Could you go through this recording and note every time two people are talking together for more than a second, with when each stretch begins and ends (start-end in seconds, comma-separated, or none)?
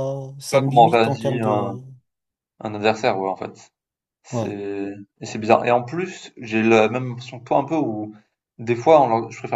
0.5-1.8